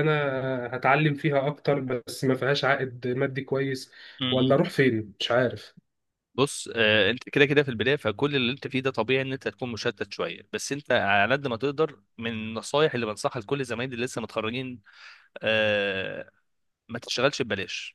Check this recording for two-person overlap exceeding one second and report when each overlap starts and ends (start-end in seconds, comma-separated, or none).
none